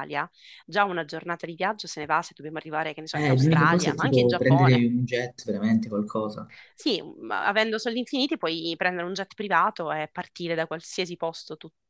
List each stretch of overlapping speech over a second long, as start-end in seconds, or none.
3.1-4.9